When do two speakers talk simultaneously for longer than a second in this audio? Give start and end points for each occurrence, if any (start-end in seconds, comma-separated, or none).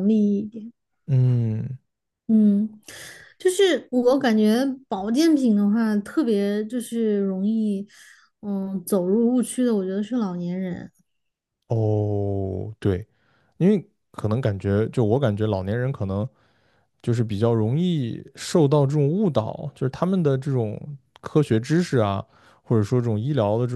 none